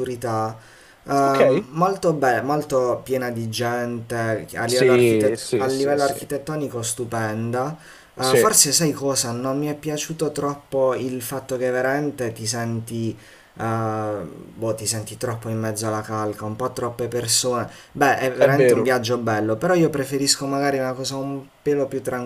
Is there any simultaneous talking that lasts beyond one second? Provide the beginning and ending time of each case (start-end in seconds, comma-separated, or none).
4.7-6.2